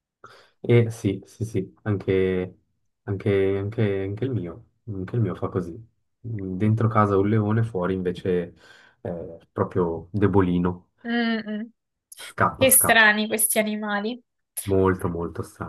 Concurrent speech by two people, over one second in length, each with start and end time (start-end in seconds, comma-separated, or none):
none